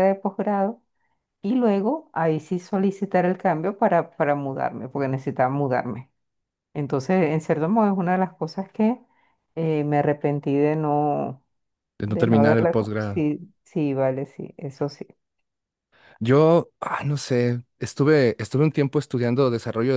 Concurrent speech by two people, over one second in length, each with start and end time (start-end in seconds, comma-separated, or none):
12.1-13.3